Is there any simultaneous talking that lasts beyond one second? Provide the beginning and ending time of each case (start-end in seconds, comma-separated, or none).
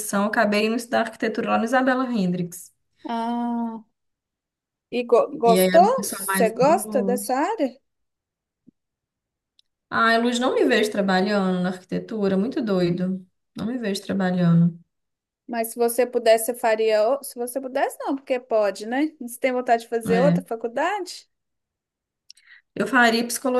5.5-7.2